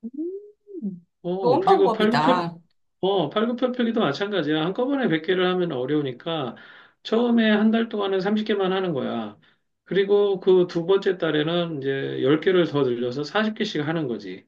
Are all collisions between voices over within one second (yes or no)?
no